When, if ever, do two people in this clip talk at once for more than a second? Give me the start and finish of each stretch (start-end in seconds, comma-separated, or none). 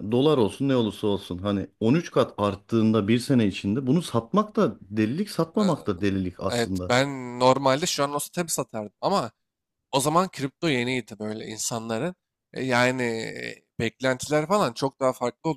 none